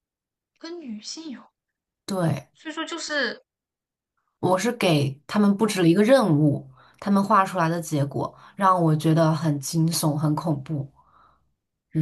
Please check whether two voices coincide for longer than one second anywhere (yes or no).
no